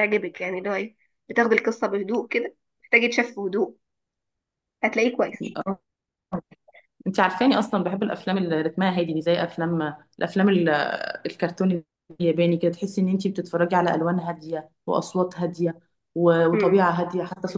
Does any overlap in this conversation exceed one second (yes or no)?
no